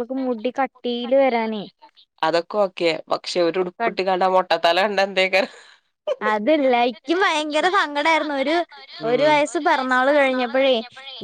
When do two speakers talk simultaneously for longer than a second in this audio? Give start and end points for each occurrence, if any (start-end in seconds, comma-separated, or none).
none